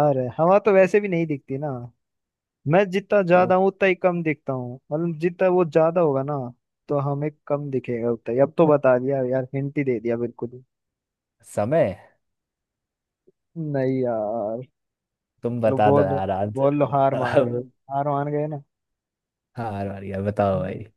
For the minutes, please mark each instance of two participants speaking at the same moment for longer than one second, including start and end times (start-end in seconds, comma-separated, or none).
15.7-17.6